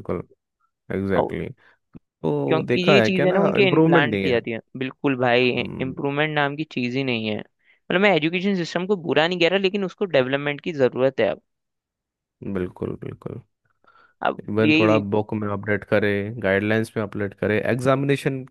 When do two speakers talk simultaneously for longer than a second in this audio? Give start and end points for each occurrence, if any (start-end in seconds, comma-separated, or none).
2.5-4.4